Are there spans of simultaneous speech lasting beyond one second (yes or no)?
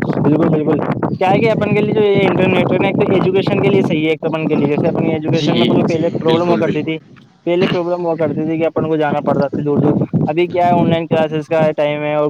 yes